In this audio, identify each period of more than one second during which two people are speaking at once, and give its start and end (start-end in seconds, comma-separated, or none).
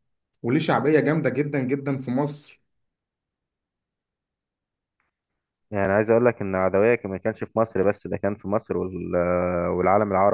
none